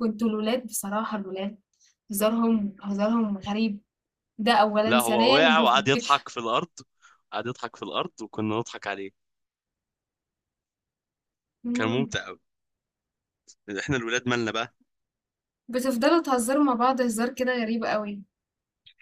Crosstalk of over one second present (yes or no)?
yes